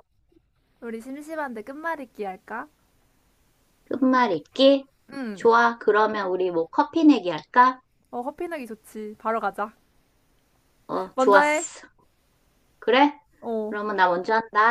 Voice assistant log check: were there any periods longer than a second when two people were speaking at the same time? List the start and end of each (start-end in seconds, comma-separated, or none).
none